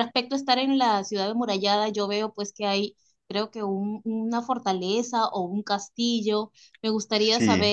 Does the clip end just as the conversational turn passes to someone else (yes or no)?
no